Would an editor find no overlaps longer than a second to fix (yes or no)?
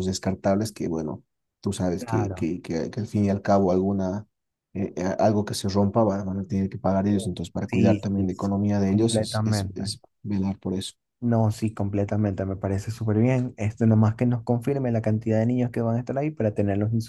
no